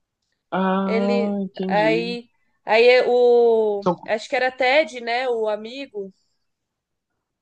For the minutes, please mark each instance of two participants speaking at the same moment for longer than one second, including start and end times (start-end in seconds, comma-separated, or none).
0.8-2.2